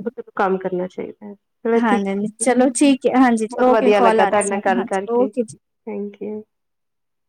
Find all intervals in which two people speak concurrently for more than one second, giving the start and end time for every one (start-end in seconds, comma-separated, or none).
3.6-5.3